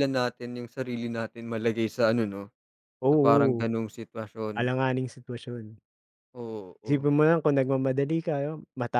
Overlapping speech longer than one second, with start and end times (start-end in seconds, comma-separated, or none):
none